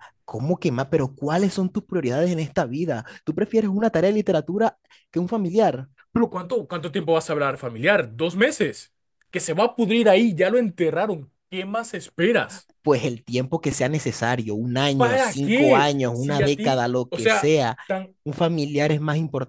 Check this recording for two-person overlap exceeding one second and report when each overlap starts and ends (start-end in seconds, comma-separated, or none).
14.9-17.8